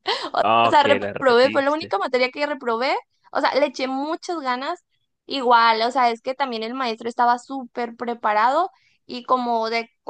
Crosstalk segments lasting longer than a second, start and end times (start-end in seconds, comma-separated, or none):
0.6-2.0